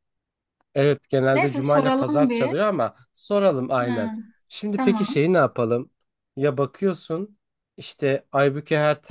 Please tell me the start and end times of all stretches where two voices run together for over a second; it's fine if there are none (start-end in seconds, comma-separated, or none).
1.3-2.5